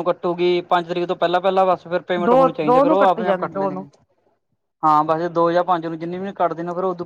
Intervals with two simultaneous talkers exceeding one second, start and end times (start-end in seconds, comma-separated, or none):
2.2-3.9